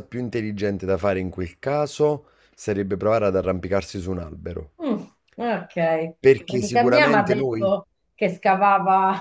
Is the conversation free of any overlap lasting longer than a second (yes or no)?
no